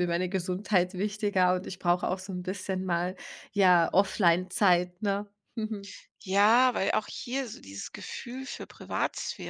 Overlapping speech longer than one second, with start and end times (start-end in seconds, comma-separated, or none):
none